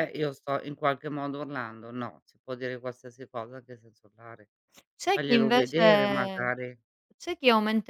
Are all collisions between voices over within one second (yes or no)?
no